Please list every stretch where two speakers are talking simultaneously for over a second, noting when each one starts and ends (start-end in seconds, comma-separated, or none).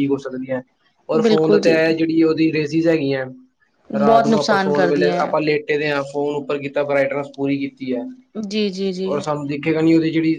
4.0-5.3